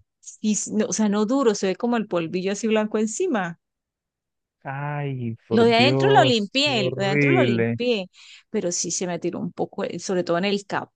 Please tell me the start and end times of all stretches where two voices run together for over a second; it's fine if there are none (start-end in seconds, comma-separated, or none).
5.5-7.8